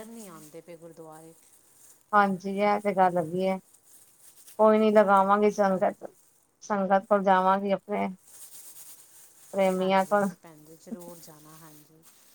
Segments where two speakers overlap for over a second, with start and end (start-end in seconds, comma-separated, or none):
none